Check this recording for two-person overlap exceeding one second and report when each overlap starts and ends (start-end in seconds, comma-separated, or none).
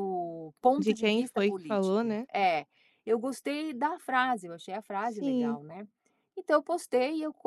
0.8-2.3